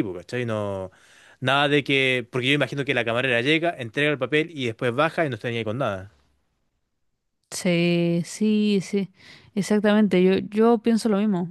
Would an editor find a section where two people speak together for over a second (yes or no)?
no